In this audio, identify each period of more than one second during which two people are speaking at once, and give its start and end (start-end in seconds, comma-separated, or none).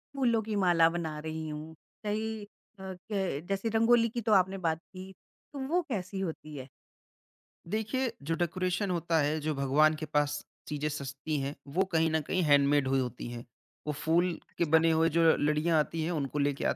none